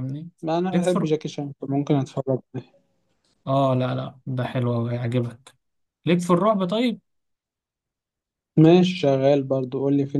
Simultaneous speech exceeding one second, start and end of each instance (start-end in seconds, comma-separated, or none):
none